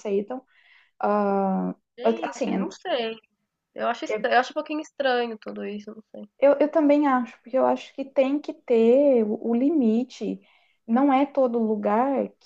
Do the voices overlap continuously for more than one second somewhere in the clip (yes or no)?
no